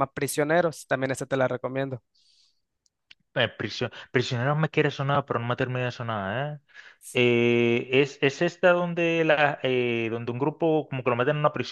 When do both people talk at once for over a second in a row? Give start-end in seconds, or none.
none